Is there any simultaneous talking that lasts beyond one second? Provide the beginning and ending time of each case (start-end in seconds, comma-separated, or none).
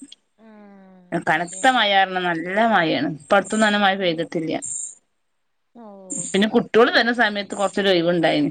none